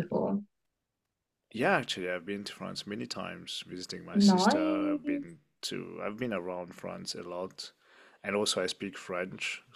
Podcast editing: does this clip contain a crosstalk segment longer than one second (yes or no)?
yes